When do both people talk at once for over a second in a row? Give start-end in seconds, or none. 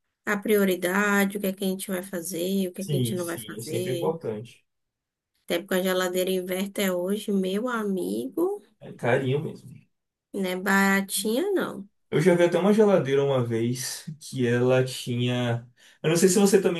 2.8-4.2